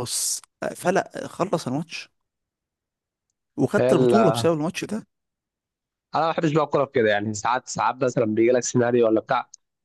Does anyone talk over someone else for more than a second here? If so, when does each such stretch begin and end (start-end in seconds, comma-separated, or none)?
none